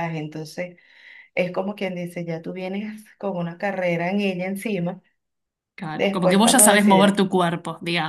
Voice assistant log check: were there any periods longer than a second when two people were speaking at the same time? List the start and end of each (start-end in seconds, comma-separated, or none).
5.9-7.2